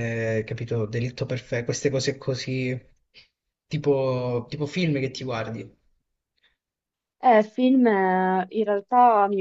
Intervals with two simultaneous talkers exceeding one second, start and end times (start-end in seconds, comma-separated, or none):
none